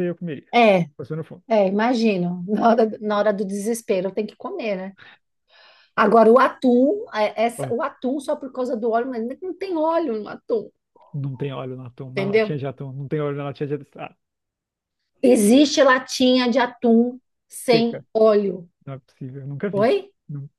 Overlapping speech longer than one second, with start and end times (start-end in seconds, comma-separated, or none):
none